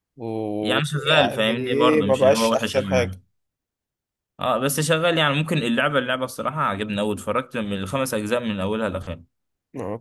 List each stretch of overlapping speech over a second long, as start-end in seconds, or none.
0.6-3.1